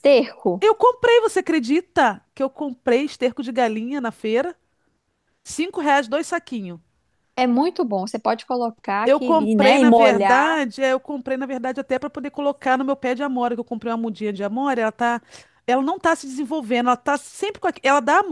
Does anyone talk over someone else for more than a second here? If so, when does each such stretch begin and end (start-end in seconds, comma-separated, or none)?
9.0-10.6